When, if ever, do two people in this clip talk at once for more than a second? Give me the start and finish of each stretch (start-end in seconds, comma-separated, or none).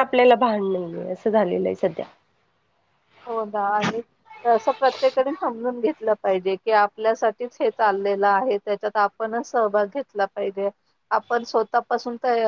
none